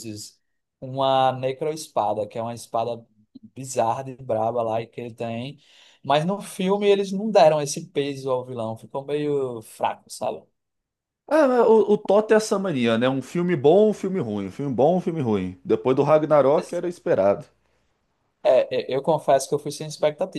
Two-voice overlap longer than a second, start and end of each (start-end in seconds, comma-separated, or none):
none